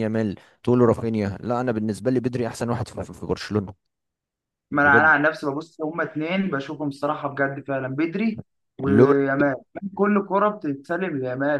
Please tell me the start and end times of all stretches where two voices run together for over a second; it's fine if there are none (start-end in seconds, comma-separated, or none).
none